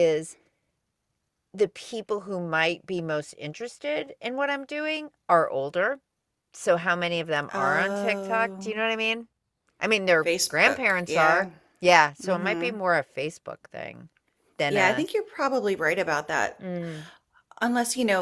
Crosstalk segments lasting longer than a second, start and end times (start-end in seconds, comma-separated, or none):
7.5-8.8, 10.2-11.5